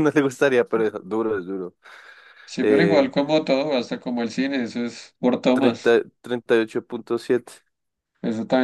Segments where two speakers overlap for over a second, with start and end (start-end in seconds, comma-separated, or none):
none